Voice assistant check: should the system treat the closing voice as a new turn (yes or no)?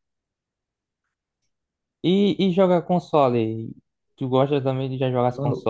yes